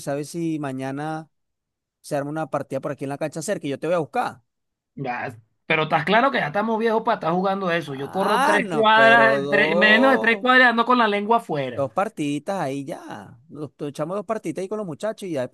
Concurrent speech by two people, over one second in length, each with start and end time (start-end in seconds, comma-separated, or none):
7.9-10.5